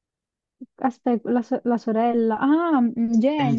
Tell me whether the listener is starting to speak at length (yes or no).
yes